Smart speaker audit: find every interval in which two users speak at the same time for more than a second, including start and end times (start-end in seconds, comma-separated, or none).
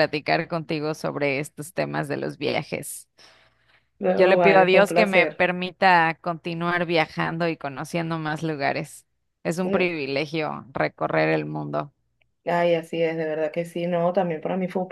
4.2-5.5